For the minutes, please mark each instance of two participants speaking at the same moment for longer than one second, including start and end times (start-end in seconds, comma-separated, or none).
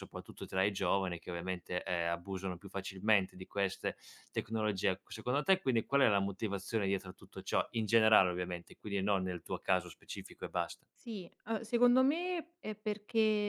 none